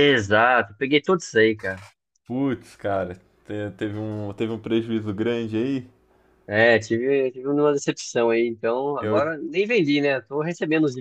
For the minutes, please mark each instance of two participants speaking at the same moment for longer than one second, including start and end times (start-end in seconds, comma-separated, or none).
none